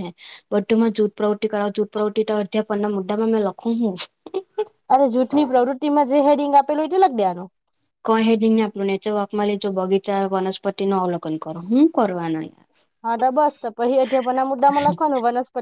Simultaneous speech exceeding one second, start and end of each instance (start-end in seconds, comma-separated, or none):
none